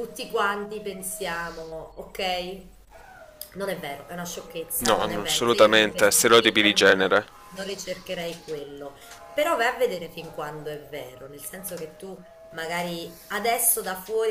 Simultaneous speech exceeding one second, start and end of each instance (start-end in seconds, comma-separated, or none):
4.8-7.2